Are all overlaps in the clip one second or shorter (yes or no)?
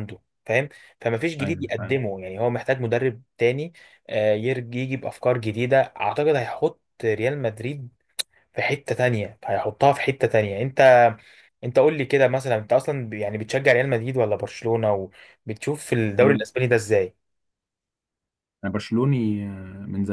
yes